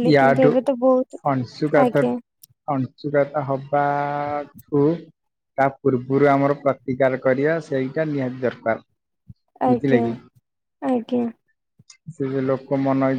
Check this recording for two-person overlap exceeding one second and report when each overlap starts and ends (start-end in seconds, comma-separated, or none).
none